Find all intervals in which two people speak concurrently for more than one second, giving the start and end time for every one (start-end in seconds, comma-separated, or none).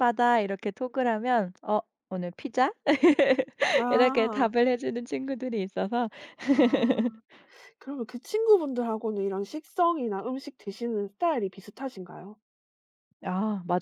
none